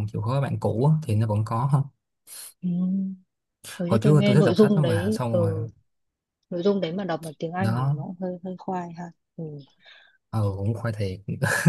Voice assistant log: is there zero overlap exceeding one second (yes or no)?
no